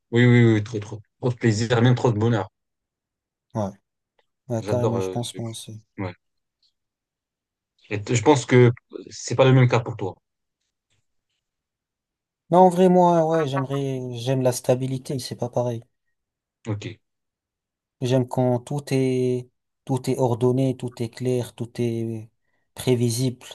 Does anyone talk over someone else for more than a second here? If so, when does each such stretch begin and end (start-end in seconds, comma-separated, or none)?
4.6-5.8